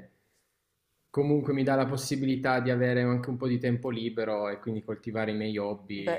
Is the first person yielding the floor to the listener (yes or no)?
yes